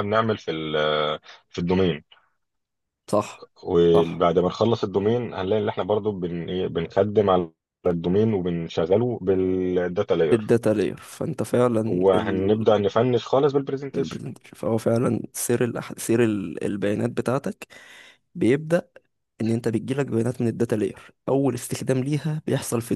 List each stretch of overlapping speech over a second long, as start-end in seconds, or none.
none